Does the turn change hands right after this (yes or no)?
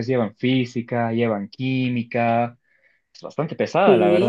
yes